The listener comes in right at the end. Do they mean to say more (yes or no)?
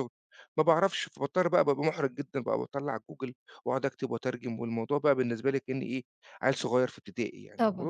yes